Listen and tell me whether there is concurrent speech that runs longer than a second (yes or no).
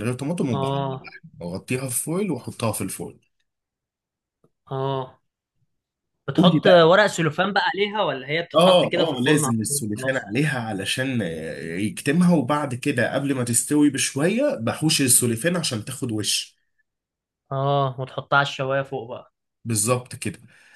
yes